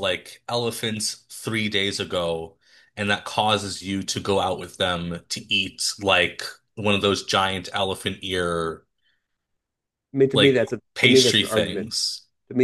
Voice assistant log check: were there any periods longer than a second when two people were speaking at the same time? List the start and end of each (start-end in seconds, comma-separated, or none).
10.3-11.9